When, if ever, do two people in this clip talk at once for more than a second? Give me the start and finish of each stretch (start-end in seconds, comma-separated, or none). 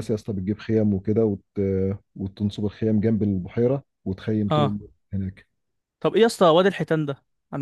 none